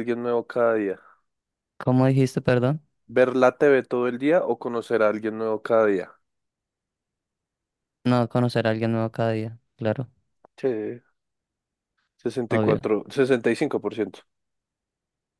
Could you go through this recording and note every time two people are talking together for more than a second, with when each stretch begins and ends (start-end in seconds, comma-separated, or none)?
none